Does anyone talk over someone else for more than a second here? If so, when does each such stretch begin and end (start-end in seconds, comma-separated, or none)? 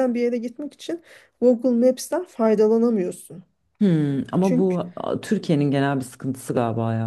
none